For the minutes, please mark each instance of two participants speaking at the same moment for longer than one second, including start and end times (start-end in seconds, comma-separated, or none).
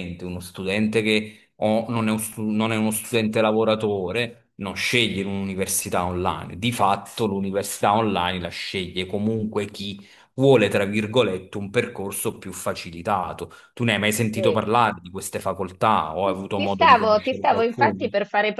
16.5-18.0